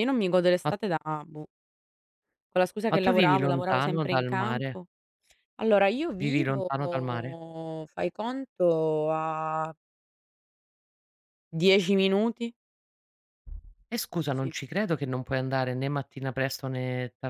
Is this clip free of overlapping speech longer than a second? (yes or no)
no